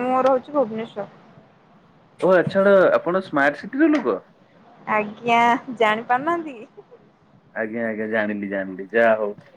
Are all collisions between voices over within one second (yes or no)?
yes